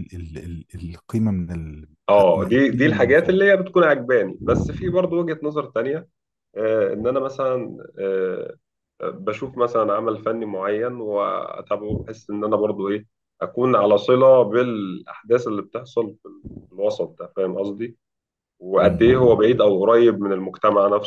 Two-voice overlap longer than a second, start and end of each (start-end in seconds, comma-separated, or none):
2.1-3.4